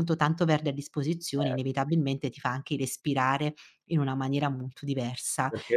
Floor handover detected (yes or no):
no